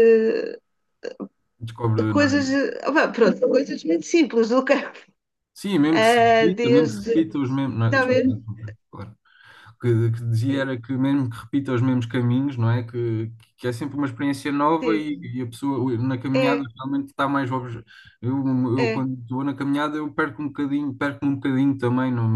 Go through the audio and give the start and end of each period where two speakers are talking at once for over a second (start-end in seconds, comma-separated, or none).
5.9-7.2